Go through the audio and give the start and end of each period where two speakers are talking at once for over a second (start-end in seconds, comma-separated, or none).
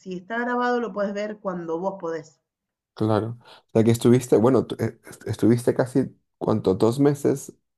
none